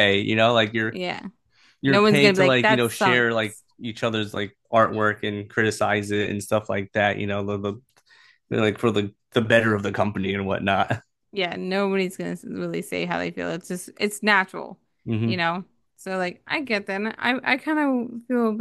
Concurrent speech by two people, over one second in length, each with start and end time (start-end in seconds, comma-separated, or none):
1.9-3.6